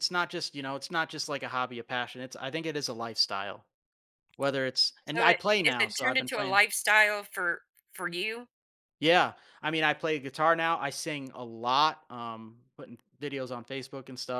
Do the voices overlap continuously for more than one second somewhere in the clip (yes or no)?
yes